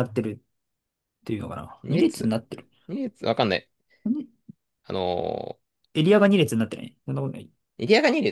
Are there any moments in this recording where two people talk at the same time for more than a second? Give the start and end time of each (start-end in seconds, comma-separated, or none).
none